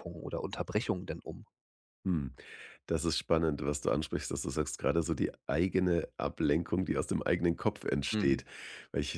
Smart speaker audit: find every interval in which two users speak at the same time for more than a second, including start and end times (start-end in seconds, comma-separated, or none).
none